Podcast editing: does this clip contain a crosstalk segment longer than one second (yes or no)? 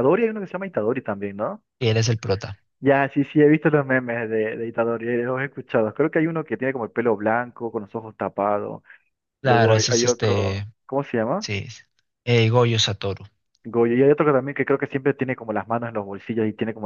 yes